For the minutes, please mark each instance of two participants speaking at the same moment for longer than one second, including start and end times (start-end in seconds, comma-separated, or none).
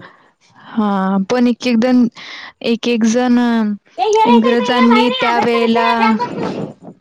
4.3-6.2